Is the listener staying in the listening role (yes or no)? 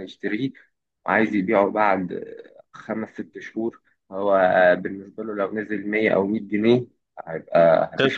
yes